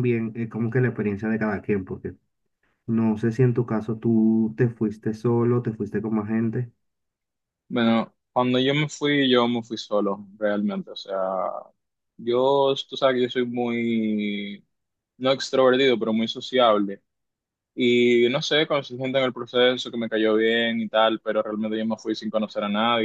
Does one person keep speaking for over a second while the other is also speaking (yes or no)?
no